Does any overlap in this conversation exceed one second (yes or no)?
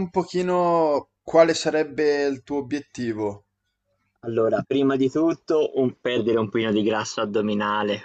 no